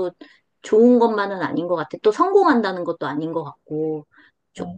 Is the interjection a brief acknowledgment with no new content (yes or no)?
no